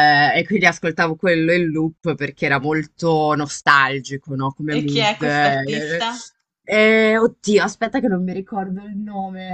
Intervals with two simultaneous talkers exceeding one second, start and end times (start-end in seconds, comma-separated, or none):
4.7-6.0